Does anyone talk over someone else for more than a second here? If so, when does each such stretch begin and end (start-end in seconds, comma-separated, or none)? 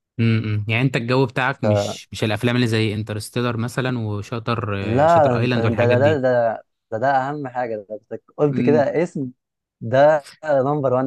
4.8-6.2